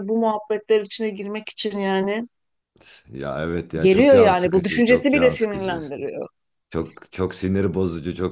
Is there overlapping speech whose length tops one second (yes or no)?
yes